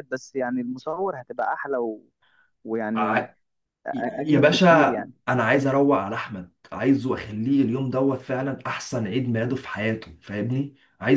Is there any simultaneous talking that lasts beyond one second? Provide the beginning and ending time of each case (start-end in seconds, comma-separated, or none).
none